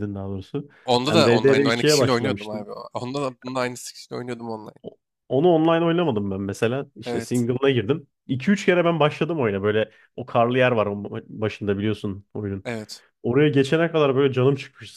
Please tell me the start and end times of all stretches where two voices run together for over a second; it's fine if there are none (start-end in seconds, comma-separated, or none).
1.1-2.7